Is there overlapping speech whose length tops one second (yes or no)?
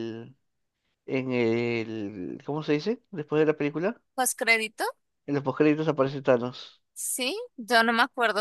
no